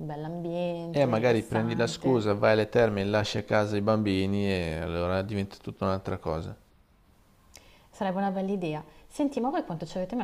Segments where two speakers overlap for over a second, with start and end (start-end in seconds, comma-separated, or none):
0.9-2.3